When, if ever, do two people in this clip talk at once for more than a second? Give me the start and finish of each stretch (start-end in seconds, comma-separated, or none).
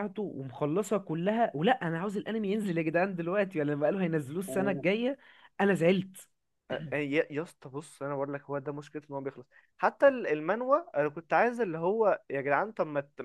none